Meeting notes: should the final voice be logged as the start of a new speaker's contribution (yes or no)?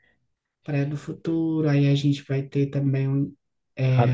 yes